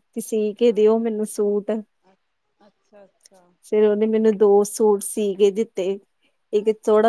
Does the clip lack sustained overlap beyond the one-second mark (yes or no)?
yes